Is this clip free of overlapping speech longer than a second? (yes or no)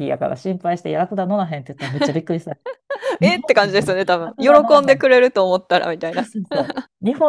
no